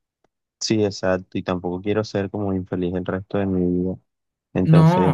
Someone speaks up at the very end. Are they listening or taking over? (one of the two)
taking over